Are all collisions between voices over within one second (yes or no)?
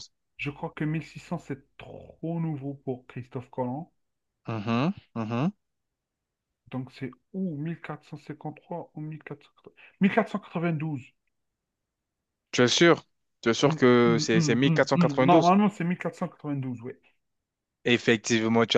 no